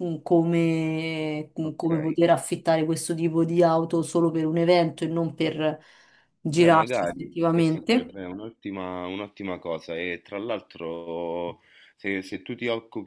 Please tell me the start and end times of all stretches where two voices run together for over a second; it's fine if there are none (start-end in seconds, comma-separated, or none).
6.5-8.1